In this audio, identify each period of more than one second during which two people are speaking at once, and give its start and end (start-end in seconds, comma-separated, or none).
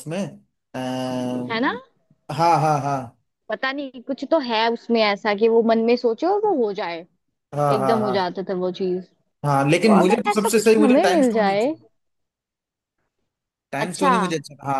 9.6-11.7